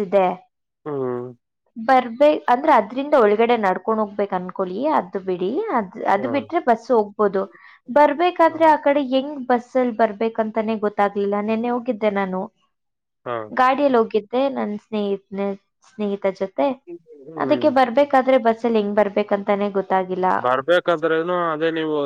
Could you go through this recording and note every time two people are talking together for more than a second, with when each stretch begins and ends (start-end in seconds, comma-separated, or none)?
none